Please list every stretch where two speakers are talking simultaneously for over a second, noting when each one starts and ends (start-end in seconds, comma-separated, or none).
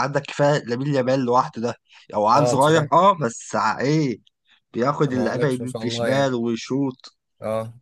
5.1-6.3